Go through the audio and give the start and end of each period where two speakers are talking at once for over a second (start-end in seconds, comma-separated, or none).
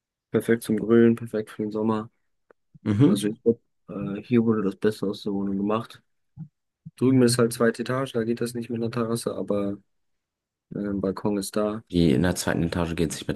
none